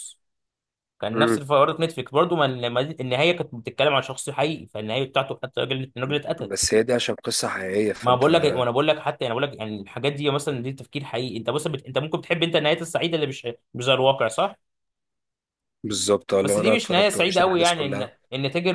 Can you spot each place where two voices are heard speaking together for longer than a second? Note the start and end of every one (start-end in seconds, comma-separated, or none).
16.4-18.1